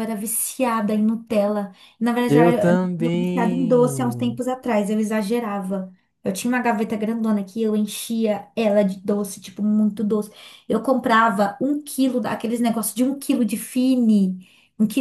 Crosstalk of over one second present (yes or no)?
yes